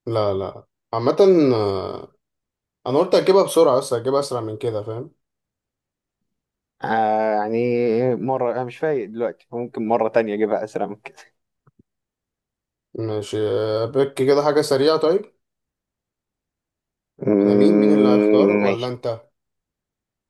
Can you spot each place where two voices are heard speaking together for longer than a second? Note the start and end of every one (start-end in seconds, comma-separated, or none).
17.4-18.9